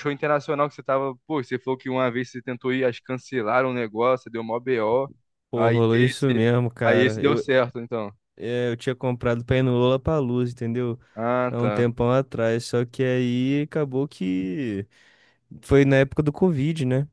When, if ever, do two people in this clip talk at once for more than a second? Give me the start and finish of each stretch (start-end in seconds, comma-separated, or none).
5.5-7.4